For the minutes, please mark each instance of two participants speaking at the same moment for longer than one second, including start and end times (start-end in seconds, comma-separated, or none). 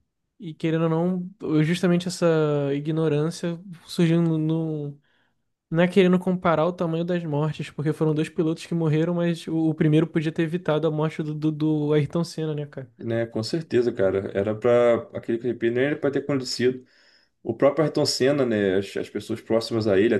none